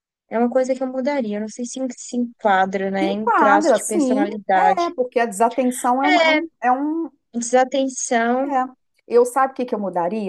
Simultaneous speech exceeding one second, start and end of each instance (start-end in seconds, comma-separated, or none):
3.0-4.9